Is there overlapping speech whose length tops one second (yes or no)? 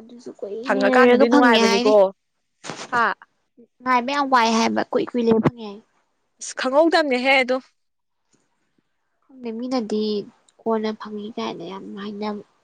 yes